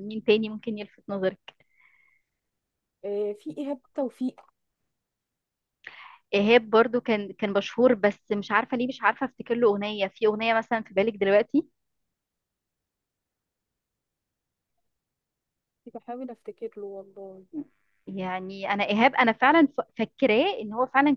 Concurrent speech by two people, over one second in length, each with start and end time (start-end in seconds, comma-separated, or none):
none